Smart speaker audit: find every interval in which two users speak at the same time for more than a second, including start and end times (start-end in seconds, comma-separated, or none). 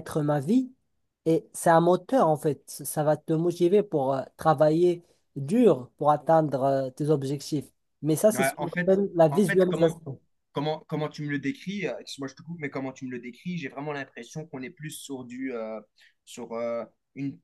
8.3-9.9